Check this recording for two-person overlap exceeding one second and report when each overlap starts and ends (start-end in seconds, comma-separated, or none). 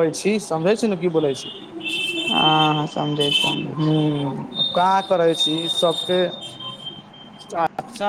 none